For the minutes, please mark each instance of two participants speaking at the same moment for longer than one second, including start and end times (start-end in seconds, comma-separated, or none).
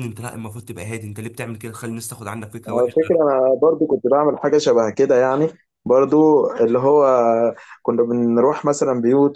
none